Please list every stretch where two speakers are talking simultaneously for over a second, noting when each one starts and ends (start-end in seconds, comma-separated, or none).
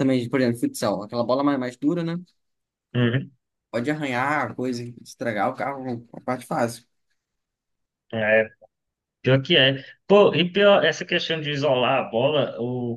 none